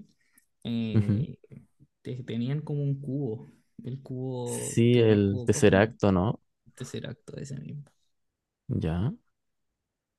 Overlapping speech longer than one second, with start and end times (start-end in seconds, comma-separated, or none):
4.4-6.0